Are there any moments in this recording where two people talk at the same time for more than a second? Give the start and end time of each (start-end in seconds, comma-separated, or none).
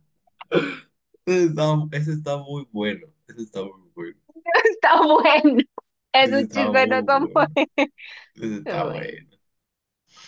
6.2-7.5